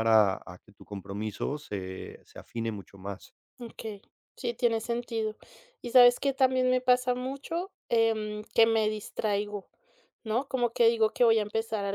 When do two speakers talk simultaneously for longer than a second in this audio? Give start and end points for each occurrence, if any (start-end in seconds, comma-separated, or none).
none